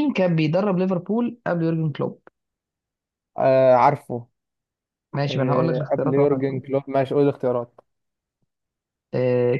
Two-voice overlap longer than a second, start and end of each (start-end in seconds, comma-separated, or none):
5.3-6.6